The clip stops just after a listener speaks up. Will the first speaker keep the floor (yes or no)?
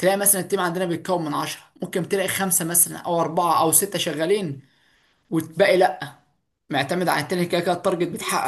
no